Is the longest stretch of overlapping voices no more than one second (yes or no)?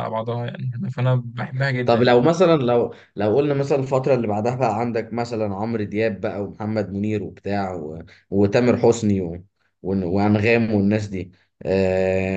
yes